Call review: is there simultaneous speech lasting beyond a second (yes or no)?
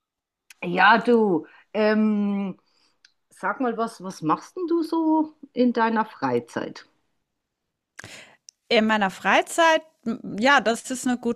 no